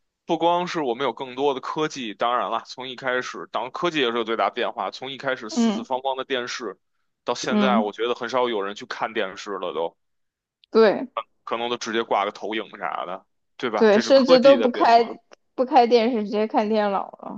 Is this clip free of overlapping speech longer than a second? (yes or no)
no